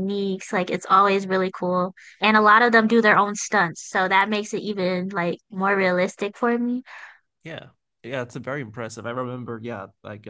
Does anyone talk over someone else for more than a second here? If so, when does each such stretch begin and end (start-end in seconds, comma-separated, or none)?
none